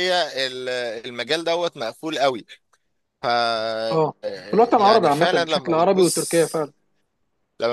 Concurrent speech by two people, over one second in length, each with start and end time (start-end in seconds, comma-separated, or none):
4.8-6.4